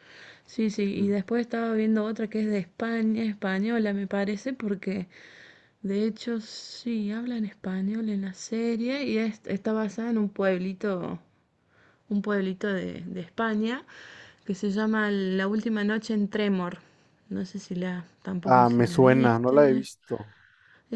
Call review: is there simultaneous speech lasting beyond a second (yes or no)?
yes